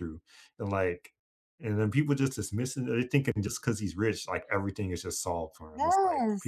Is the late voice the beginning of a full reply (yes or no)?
yes